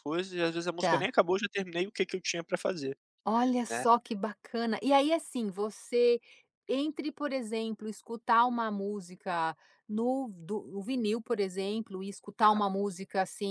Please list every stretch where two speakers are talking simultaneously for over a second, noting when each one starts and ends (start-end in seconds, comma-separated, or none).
none